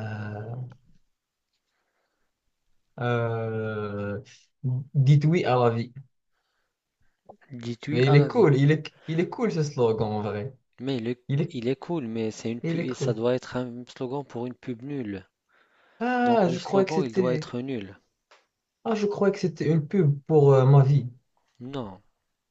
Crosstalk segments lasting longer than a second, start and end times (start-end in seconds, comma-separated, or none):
16.2-17.4